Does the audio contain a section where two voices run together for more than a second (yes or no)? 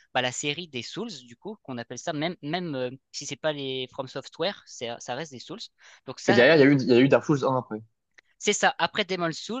no